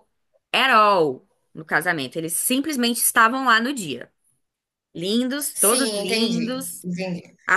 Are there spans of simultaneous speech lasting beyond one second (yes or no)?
yes